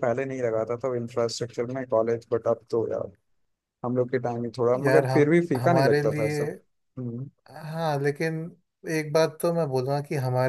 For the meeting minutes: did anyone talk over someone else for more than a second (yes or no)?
yes